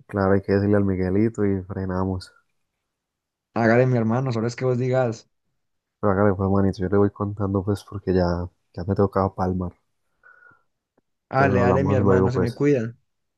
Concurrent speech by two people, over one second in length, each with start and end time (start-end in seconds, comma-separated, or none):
11.3-12.7